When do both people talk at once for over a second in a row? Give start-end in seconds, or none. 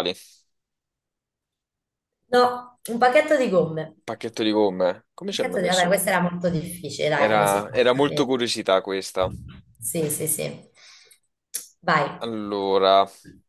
7.1-8.3